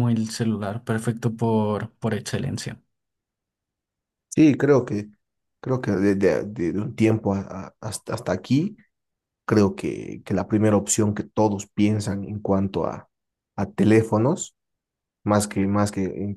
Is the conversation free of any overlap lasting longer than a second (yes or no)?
yes